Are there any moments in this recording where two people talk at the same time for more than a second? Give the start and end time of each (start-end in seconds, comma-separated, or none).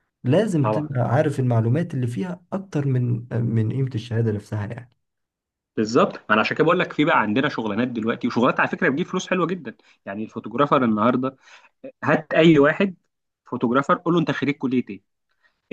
none